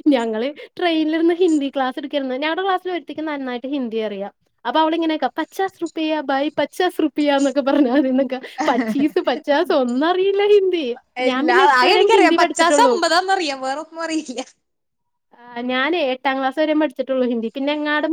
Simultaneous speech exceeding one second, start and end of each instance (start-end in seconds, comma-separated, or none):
11.3-12.9